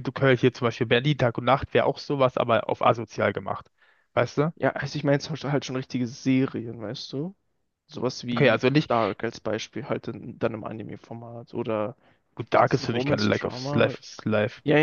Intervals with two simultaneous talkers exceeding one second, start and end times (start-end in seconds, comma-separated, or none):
12.5-14.0